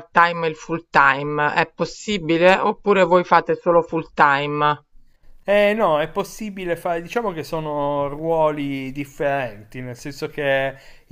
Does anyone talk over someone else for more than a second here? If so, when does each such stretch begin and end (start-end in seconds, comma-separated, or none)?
none